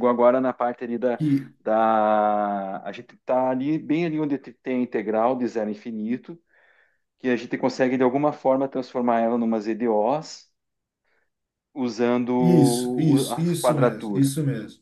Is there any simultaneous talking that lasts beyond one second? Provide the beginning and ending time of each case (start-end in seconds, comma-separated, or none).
12.4-14.3